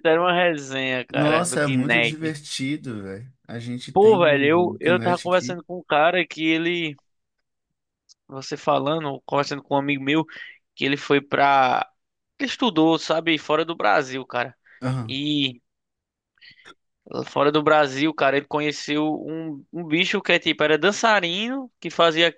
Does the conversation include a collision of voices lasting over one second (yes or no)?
yes